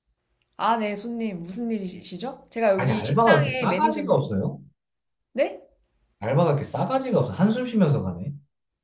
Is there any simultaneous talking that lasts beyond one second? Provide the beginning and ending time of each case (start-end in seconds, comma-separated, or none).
2.8-4.3